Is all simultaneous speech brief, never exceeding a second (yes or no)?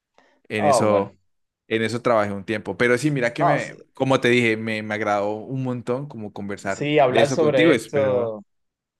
no